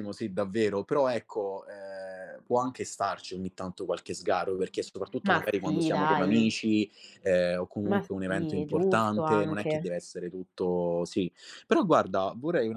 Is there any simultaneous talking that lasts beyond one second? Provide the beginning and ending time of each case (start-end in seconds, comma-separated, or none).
5.3-6.5, 7.8-9.8